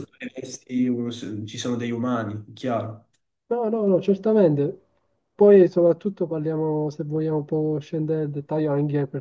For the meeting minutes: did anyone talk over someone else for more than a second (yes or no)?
no